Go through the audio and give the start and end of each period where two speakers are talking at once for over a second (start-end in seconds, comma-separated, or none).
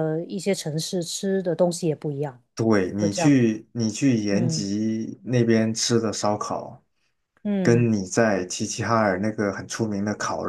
none